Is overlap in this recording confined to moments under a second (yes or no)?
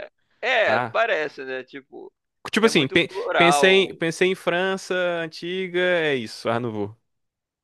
no